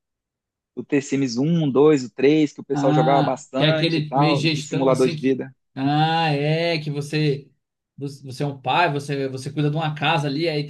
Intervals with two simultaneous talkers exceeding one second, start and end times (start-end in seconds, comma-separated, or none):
2.7-5.5